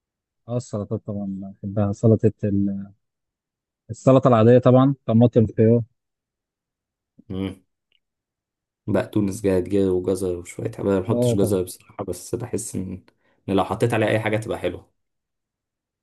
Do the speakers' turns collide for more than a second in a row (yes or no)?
no